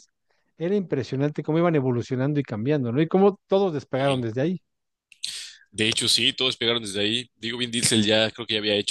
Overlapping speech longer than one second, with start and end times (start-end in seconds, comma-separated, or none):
none